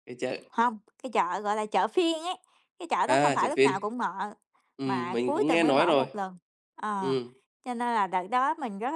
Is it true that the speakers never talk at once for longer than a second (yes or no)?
no